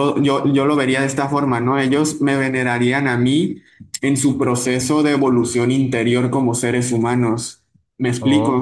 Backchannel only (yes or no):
no